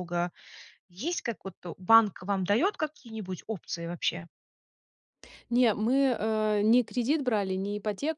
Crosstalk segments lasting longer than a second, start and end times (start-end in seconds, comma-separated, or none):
none